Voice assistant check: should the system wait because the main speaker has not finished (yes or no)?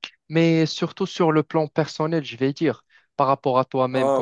yes